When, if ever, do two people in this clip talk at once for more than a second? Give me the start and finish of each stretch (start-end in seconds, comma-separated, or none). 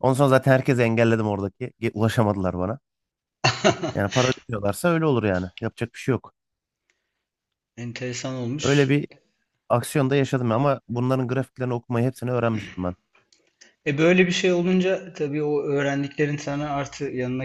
none